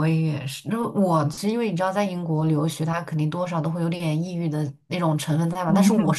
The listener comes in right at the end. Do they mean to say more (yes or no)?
no